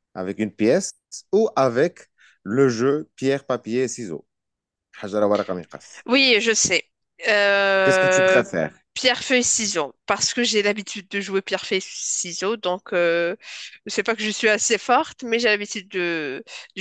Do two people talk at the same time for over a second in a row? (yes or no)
no